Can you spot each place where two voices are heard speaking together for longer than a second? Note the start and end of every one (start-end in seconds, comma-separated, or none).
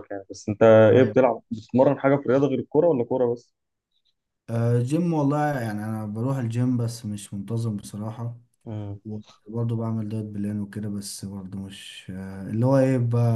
none